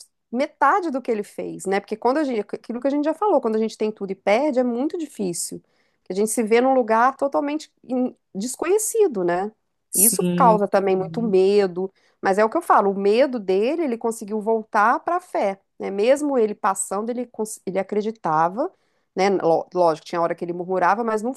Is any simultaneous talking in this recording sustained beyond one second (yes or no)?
yes